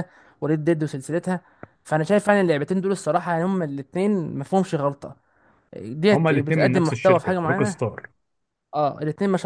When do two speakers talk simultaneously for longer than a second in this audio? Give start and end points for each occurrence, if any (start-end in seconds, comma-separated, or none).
6.1-7.7